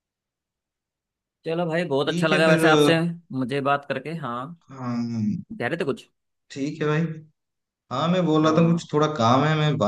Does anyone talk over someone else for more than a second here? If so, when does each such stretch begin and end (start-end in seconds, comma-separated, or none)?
none